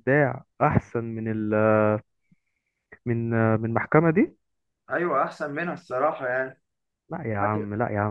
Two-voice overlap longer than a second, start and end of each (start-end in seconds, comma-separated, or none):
none